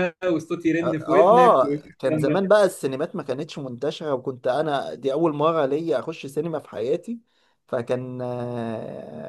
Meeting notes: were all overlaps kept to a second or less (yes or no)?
no